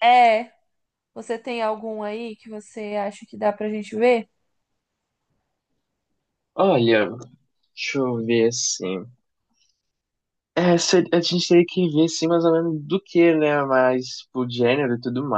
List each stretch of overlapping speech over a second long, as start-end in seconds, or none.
none